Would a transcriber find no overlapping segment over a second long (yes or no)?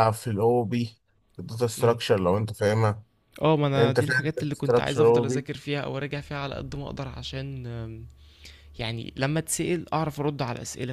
no